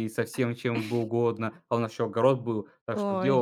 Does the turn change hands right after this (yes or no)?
no